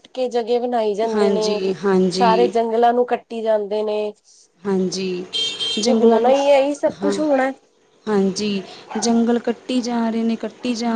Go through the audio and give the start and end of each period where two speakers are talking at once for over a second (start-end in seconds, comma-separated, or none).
none